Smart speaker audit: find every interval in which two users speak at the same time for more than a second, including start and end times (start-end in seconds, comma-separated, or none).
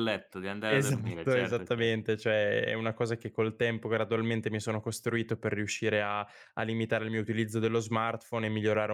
0.7-1.9